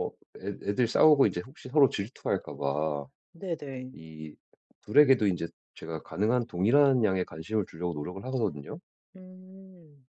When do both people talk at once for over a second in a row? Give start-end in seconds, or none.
none